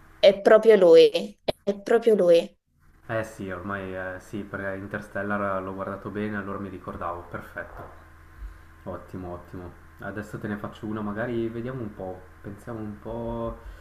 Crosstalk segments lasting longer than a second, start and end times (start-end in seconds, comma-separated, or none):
none